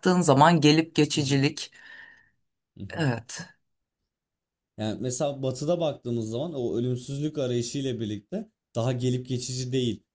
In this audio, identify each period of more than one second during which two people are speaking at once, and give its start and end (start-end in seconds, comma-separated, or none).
none